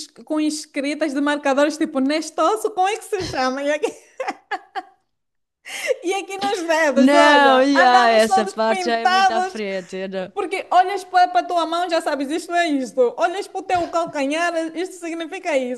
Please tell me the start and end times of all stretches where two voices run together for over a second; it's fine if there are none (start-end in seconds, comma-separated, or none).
6.9-9.6